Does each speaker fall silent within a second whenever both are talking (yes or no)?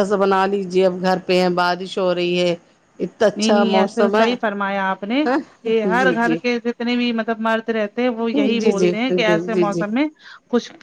yes